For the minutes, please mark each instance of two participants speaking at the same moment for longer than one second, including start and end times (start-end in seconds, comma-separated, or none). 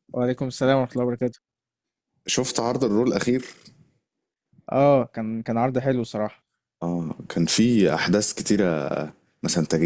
none